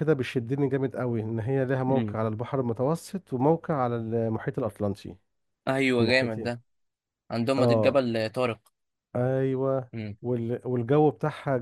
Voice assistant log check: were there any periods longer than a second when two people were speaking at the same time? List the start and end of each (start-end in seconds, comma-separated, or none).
none